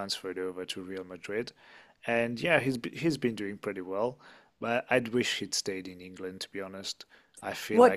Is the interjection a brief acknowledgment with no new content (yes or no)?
no